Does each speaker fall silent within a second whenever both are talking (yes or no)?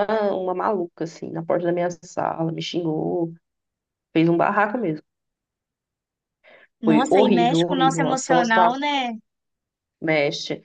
no